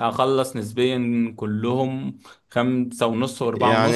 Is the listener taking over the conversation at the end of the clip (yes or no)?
yes